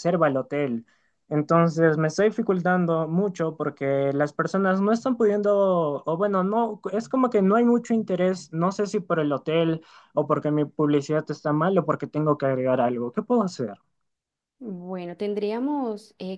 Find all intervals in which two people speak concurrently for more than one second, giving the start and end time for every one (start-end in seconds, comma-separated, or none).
none